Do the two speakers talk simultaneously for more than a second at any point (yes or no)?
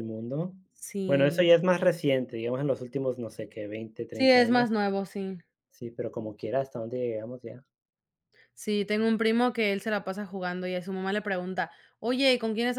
no